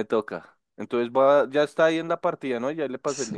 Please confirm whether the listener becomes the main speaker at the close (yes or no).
yes